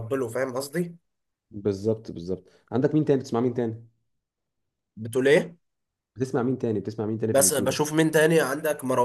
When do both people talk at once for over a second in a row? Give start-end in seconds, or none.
none